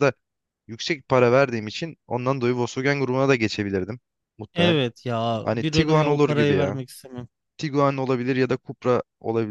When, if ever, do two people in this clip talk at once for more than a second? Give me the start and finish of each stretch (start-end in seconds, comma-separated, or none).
5.4-6.8